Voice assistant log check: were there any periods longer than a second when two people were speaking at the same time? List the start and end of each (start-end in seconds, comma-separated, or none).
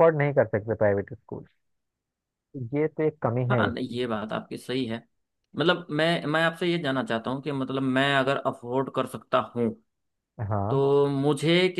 none